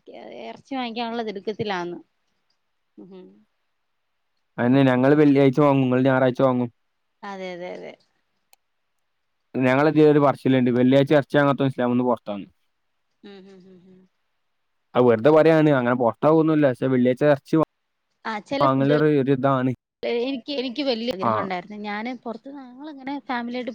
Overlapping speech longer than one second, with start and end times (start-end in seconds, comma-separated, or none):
none